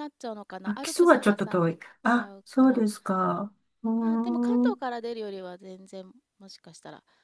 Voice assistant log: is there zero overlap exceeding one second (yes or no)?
no